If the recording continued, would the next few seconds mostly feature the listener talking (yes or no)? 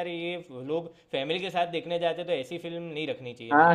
yes